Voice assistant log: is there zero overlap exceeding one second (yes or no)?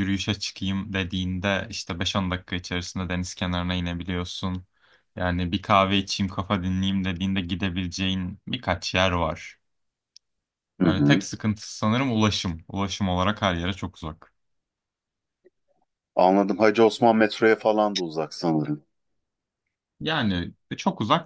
yes